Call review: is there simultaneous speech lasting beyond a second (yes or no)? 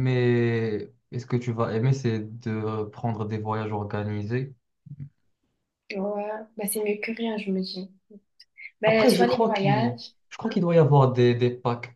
yes